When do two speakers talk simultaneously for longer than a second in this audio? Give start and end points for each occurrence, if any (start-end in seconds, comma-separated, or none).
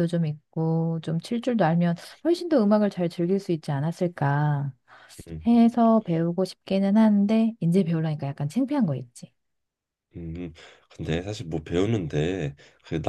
none